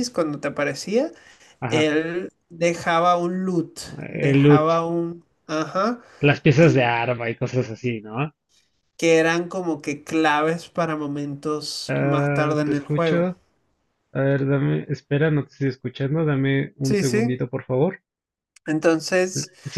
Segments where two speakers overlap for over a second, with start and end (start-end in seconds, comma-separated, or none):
11.9-13.3